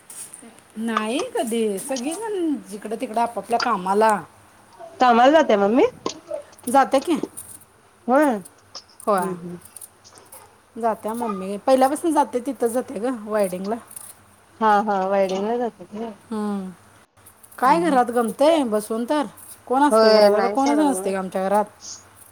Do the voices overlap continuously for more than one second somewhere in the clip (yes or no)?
yes